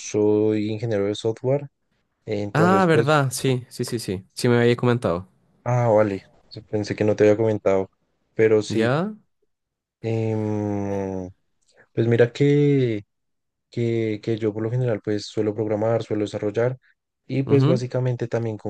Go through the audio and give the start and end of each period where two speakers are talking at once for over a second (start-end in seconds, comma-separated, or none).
none